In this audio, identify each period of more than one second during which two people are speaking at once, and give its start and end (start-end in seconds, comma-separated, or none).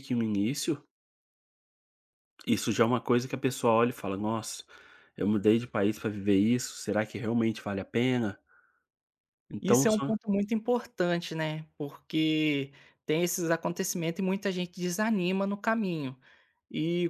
none